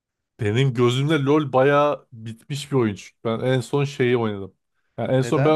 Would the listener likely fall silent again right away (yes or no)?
yes